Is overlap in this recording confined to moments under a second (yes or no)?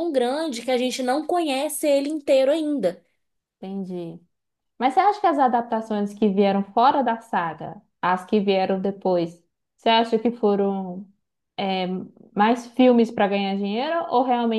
yes